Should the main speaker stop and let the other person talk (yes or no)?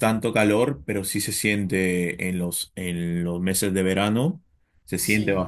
no